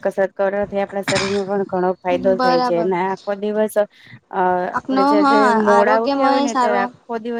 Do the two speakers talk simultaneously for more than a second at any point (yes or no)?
yes